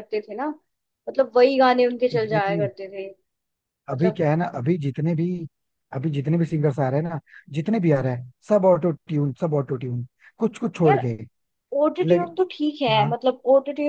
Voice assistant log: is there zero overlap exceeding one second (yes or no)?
yes